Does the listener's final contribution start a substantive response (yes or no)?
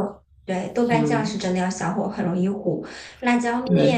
no